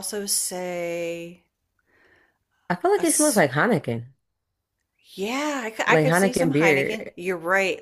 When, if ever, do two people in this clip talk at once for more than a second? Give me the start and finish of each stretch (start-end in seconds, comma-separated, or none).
5.9-7.1